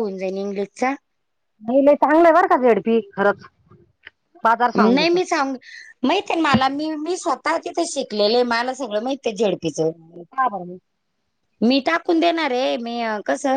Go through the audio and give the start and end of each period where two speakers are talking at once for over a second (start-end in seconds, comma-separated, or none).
none